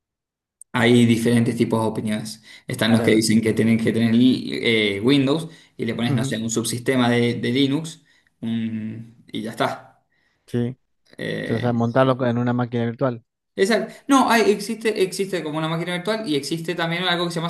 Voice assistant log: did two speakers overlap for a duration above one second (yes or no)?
no